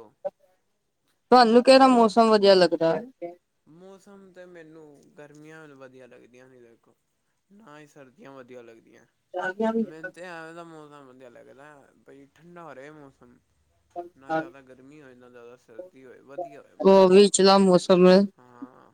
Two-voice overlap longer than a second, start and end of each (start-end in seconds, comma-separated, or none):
none